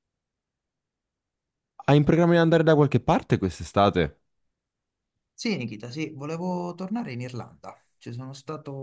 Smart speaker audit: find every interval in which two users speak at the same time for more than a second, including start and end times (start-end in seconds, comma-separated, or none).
none